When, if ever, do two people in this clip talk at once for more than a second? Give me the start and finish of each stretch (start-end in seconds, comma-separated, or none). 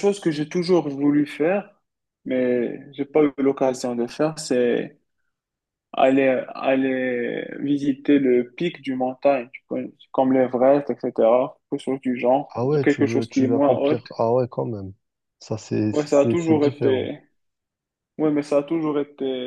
12.5-14.2, 15.9-17.1